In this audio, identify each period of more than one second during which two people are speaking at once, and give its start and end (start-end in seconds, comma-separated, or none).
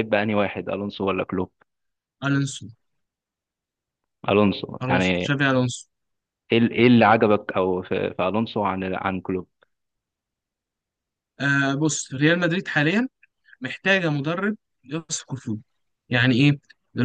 none